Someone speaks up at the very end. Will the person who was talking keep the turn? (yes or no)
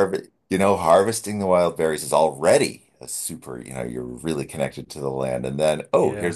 yes